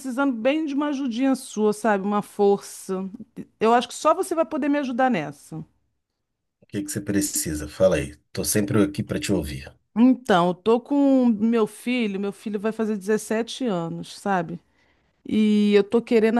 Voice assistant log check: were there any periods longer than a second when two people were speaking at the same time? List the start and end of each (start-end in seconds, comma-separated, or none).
none